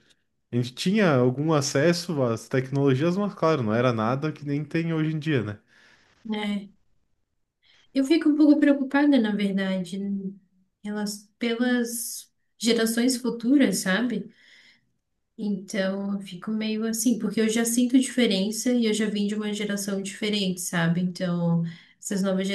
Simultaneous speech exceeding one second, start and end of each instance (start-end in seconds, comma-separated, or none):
none